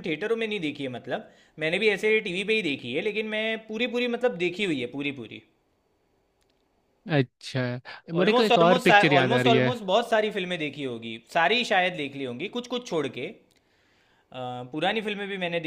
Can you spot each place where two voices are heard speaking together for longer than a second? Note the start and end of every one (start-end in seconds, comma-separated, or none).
8.2-9.7